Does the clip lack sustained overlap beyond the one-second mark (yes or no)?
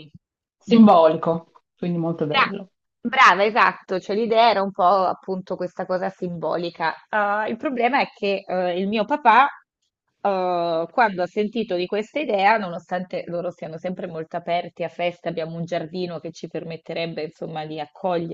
yes